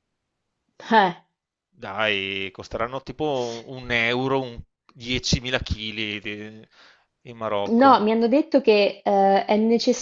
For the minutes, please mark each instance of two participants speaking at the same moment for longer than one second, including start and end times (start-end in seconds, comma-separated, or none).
none